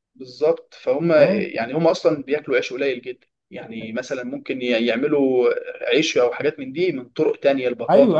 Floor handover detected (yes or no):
yes